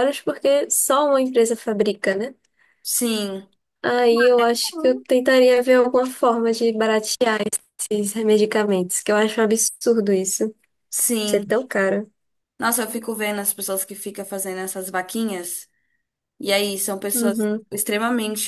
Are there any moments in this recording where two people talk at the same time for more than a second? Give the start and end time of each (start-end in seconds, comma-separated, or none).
none